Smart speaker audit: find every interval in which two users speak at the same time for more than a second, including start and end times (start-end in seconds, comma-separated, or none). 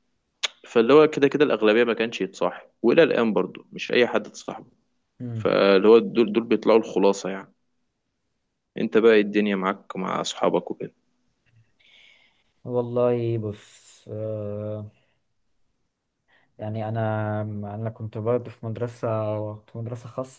none